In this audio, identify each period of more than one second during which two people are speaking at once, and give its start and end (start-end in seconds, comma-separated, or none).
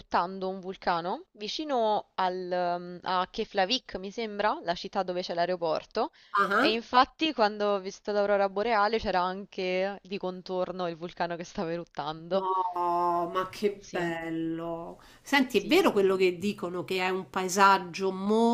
none